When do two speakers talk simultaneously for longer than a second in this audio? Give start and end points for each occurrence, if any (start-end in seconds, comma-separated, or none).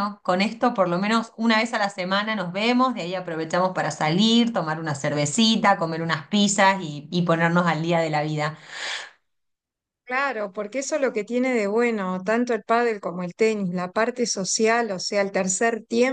none